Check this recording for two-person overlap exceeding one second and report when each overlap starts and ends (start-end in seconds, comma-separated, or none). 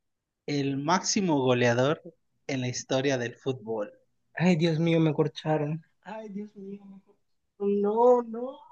none